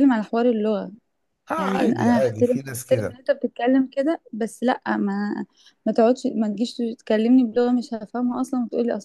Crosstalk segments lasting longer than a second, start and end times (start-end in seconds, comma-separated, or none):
1.6-3.2